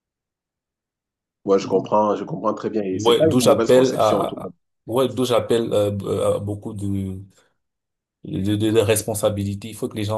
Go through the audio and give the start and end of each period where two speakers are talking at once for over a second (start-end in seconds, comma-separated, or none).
2.9-4.5